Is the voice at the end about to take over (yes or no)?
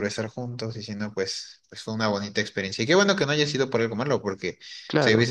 no